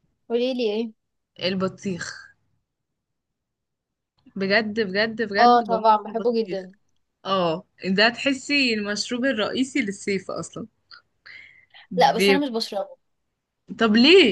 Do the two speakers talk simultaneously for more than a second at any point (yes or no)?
yes